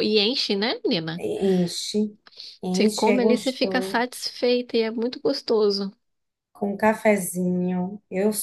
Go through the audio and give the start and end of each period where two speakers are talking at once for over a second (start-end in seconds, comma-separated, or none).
2.7-4.0